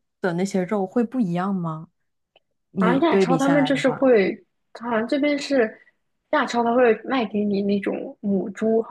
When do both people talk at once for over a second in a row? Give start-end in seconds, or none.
2.8-4.1